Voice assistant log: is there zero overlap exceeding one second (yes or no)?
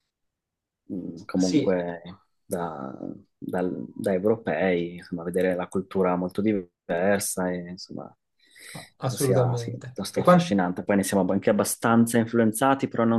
no